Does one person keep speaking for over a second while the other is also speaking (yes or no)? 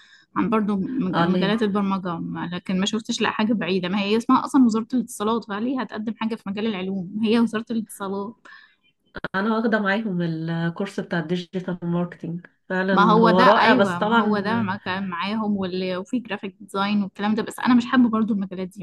yes